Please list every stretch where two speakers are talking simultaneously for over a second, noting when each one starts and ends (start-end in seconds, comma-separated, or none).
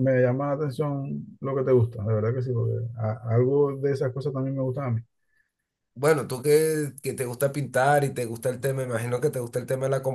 none